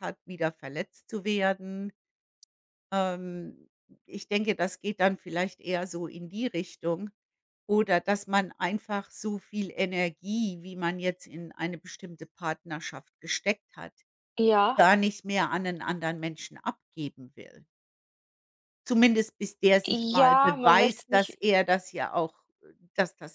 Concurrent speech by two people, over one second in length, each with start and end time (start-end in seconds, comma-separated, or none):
19.9-21.4